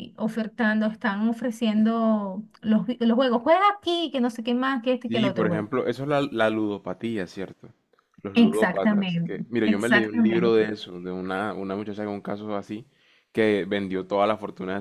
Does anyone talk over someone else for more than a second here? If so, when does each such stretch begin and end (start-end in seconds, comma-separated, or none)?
8.3-10.8